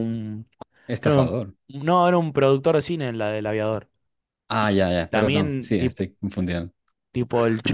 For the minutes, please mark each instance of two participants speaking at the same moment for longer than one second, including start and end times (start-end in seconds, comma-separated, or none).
4.5-6.1